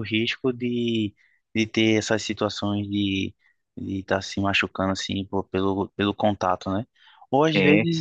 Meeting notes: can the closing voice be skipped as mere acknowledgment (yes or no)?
yes